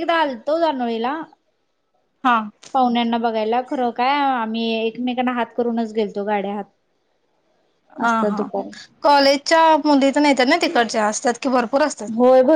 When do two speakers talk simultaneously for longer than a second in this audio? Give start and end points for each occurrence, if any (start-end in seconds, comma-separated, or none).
none